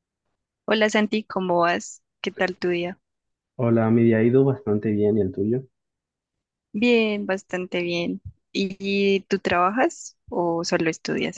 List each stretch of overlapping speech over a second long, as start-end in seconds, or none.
none